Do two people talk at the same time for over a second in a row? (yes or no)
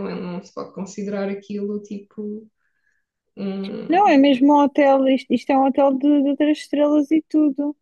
no